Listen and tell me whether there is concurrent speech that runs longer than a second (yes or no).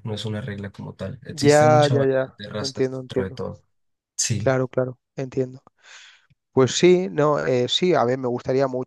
yes